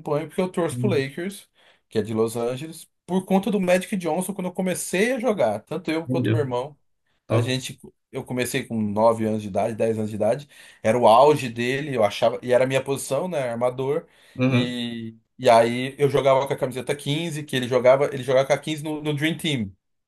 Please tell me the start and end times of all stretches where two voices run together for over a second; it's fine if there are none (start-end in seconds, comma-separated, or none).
none